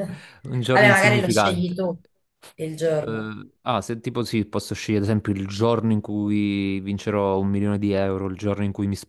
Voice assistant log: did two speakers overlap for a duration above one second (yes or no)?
yes